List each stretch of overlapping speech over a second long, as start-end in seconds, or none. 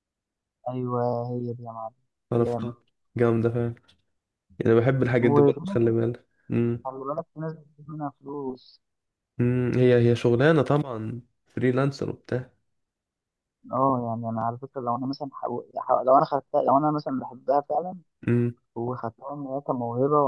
none